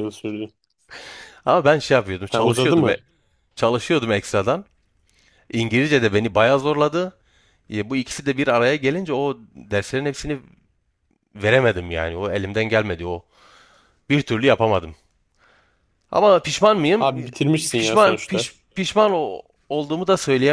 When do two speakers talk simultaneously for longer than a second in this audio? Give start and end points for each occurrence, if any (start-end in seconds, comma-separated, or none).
17.0-18.5